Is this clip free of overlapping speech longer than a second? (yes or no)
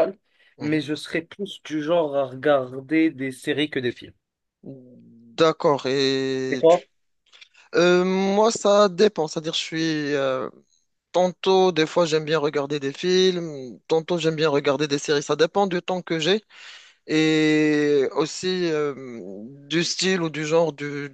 yes